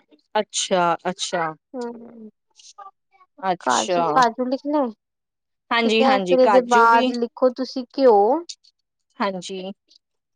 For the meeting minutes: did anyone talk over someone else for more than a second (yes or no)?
yes